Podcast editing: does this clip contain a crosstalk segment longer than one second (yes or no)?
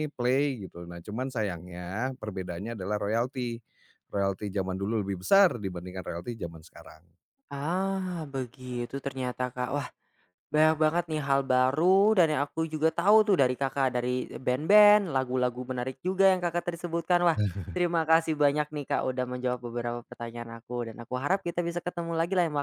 no